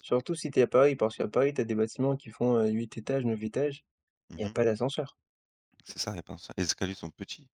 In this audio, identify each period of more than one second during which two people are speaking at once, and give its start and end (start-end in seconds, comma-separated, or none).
none